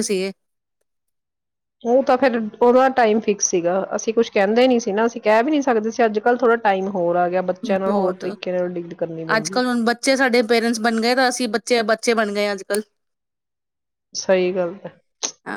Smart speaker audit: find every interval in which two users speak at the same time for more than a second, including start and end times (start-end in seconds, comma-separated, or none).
none